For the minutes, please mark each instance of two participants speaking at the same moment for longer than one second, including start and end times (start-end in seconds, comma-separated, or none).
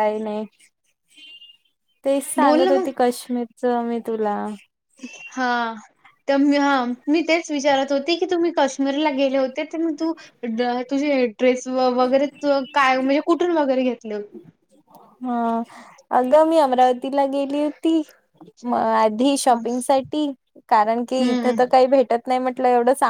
none